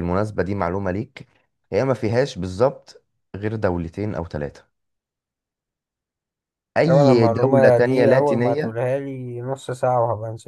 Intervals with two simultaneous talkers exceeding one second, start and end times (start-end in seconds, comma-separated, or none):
6.8-8.8